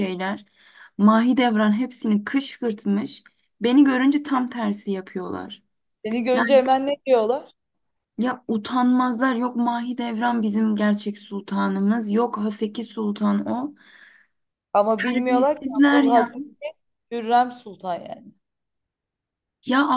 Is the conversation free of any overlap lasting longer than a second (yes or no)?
no